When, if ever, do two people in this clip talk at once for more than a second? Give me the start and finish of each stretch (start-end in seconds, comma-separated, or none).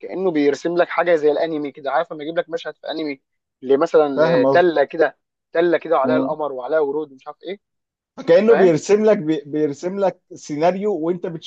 none